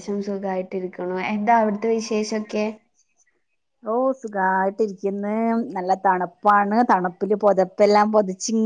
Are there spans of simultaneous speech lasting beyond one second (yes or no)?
no